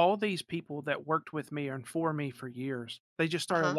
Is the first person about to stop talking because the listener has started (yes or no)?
no